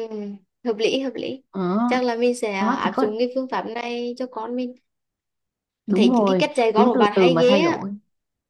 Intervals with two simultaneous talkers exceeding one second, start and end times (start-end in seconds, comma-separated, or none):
6.0-7.8